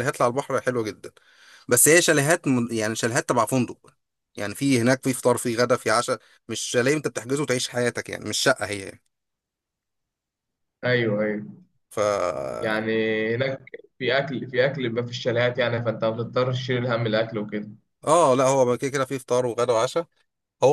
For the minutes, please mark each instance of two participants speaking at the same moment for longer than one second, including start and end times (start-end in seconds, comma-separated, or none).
none